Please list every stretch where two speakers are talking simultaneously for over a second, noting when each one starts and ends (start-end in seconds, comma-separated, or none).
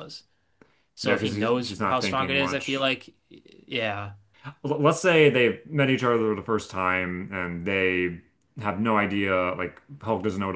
1.0-2.8